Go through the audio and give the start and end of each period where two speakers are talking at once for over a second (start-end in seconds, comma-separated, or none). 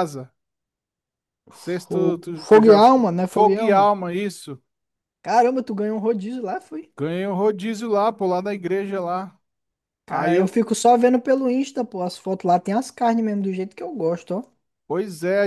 1.9-3.9